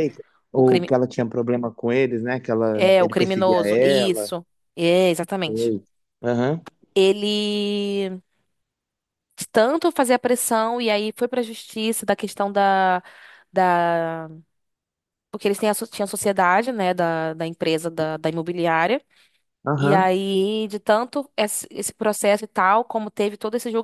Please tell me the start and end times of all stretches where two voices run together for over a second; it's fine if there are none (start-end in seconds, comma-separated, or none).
2.7-4.3